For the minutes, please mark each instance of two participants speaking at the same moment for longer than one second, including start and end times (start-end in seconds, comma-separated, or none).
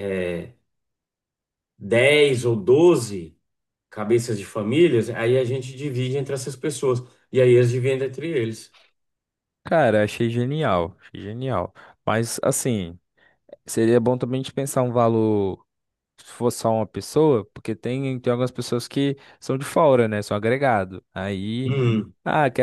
none